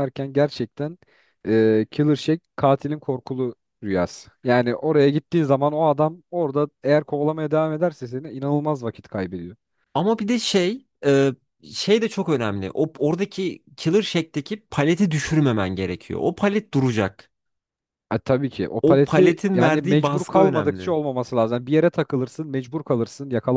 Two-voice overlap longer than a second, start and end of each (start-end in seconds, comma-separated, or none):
18.8-21.0